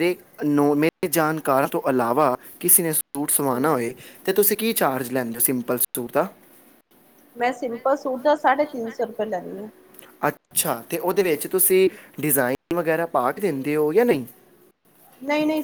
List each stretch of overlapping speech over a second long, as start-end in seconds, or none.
none